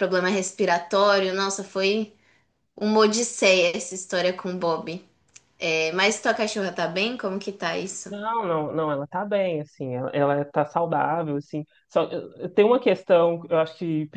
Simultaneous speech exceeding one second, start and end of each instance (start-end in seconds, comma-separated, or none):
none